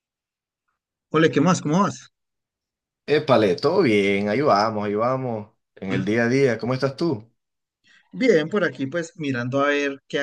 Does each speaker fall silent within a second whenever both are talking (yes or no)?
yes